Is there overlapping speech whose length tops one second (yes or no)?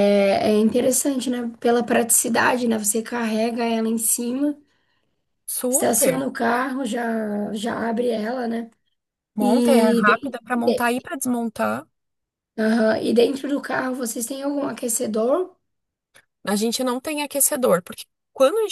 yes